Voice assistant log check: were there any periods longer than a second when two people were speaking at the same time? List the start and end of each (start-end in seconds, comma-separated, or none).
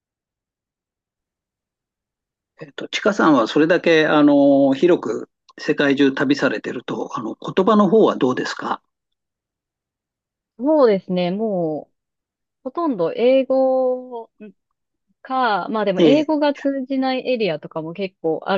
none